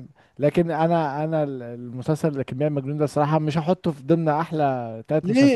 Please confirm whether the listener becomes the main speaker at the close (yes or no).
yes